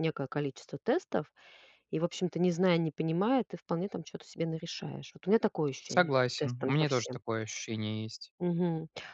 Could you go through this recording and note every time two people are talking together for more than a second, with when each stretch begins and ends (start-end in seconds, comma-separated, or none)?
5.9-7.2